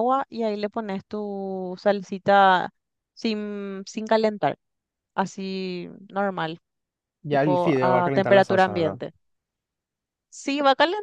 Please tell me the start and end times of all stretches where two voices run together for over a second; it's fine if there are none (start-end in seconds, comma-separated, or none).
7.3-9.0